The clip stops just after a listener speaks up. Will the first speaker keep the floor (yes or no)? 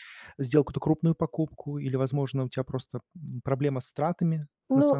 no